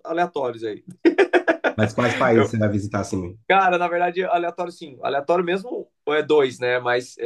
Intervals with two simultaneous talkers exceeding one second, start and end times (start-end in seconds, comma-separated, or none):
none